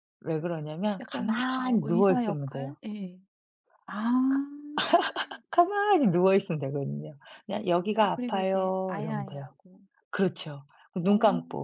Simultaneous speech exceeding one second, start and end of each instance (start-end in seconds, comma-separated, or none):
1.0-2.8, 8.0-9.5